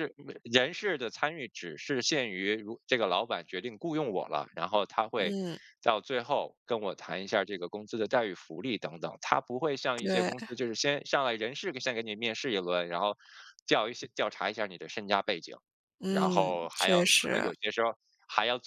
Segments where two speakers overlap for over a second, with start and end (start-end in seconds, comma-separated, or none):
16.1-17.5